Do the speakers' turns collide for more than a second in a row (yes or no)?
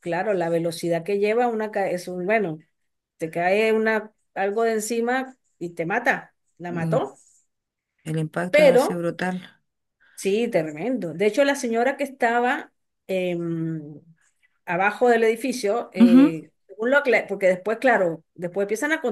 no